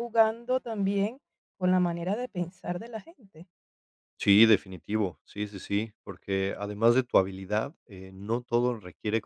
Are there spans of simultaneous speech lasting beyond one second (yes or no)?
no